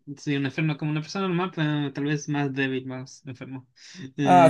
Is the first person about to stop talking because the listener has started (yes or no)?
yes